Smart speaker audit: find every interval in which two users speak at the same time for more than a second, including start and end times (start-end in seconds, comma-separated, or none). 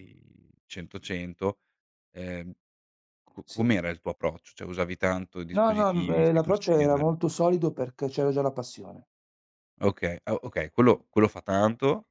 5.6-7.1